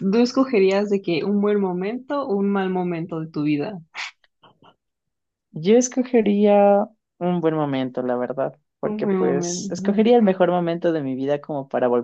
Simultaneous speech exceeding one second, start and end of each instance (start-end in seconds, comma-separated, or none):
8.9-10.1